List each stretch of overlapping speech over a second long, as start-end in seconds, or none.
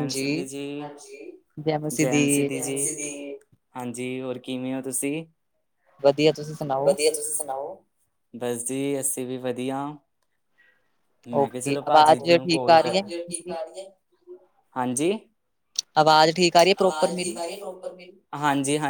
11.4-13.5